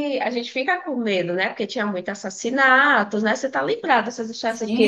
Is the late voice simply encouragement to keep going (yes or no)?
no